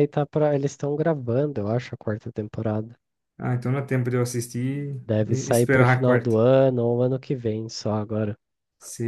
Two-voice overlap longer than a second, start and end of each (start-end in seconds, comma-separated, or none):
5.0-6.4